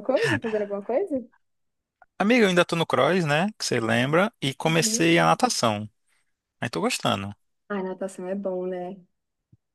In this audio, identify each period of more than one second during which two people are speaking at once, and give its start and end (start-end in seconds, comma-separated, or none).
none